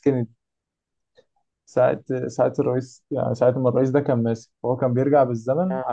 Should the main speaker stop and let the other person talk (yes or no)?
no